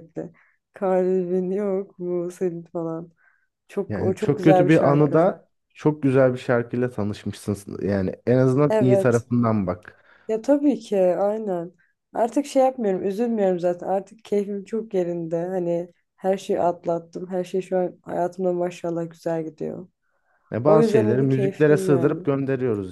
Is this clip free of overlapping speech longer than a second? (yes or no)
no